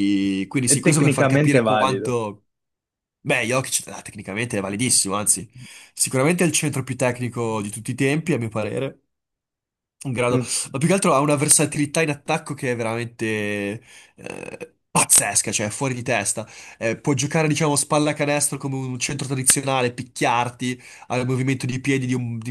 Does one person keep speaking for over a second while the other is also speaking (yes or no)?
yes